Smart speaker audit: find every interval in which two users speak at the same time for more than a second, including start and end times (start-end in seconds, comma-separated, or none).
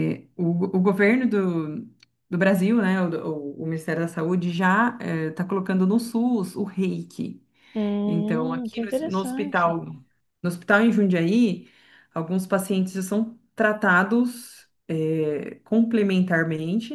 8.1-9.8